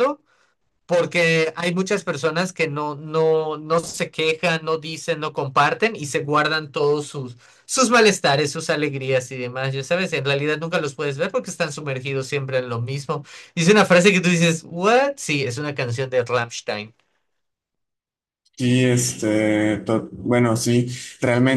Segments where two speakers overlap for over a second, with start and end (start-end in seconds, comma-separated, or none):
none